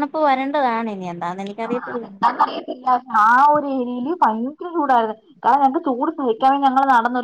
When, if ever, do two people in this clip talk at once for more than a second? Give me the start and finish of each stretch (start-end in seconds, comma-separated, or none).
none